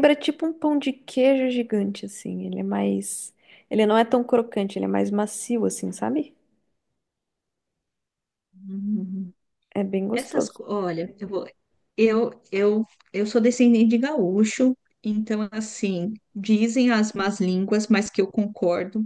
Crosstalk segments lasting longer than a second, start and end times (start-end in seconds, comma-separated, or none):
none